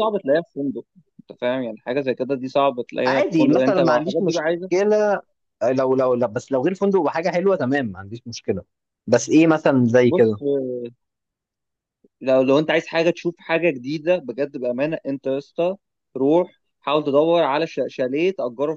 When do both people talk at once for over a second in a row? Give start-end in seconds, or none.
3.0-4.7